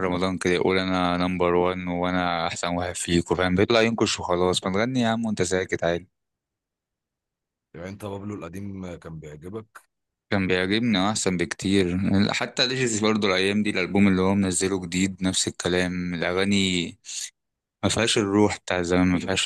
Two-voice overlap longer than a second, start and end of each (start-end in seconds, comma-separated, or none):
none